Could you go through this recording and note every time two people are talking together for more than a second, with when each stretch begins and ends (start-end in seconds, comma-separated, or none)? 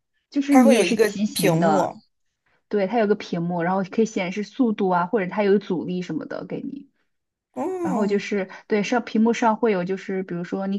0.5-1.9